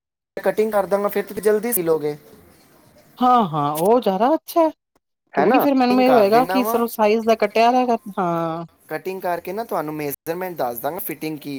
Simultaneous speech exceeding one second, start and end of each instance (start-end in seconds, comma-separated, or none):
5.4-6.8